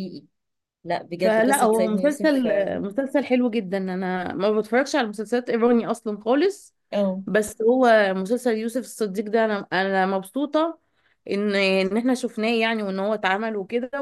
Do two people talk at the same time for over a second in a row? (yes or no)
yes